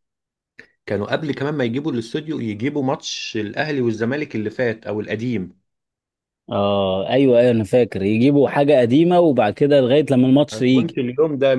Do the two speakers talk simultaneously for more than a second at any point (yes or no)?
no